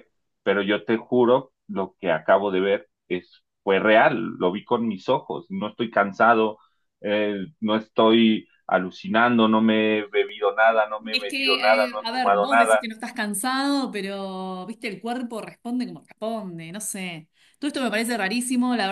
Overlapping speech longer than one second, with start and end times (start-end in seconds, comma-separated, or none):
11.1-12.9